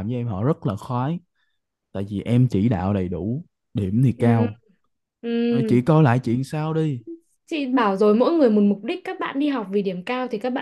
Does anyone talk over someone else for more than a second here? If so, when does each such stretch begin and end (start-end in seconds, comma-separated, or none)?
none